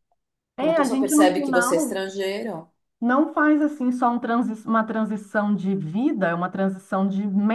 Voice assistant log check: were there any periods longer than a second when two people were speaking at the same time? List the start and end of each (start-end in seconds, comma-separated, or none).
0.6-2.0